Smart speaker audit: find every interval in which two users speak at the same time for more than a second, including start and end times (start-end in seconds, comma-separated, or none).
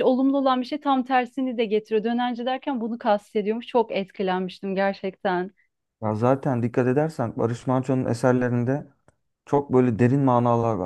none